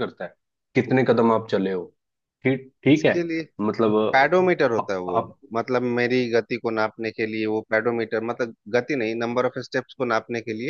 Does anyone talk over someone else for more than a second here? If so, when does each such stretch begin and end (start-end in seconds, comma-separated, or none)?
none